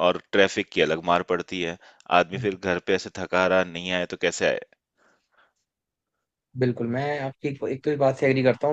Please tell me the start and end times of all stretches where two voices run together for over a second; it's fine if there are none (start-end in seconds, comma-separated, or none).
none